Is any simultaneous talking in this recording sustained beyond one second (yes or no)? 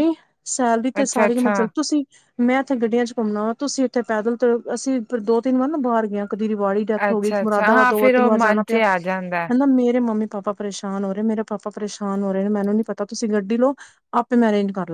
yes